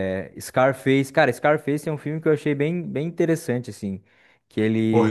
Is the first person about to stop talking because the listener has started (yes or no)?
yes